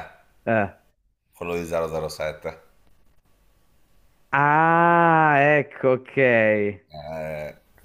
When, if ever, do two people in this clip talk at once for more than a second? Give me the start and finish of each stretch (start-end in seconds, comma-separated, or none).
none